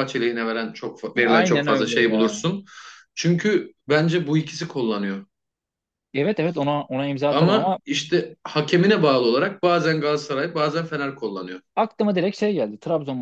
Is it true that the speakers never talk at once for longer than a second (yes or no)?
no